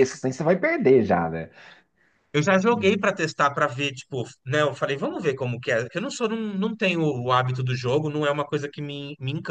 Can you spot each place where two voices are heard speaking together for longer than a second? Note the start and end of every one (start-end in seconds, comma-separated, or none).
none